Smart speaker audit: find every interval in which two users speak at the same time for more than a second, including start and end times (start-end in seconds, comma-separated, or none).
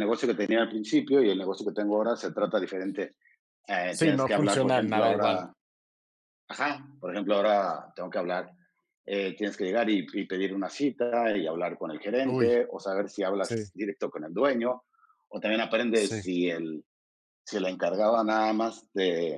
3.9-5.5